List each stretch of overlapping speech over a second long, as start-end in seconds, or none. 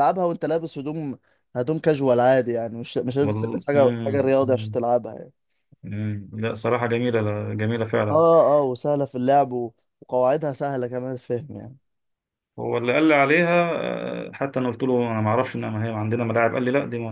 3.2-4.8